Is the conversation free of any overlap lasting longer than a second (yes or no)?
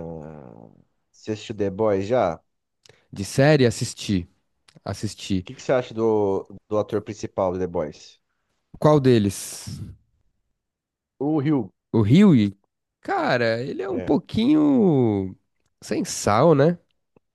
yes